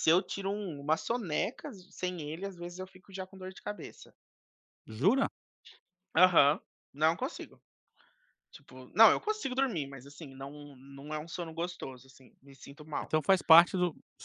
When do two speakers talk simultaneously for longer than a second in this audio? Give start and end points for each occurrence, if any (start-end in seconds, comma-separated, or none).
none